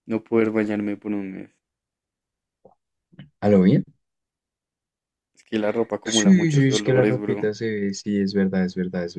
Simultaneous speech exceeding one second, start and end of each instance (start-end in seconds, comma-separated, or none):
6.0-7.5